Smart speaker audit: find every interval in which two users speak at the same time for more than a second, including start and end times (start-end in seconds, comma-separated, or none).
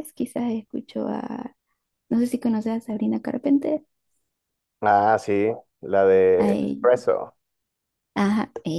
none